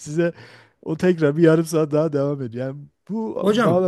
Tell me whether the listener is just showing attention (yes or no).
yes